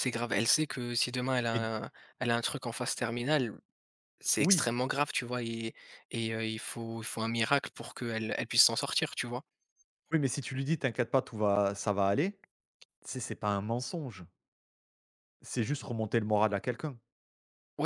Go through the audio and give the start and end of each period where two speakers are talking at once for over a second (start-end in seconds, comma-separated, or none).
none